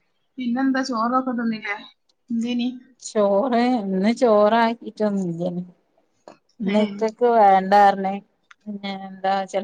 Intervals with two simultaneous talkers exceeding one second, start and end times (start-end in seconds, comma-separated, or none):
none